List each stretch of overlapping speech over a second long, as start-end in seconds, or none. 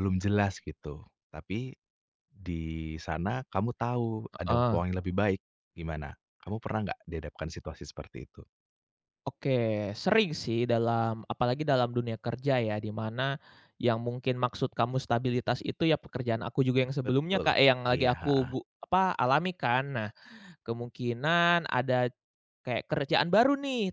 17.0-18.5